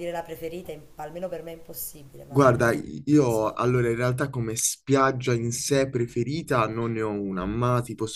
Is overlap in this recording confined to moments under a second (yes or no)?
yes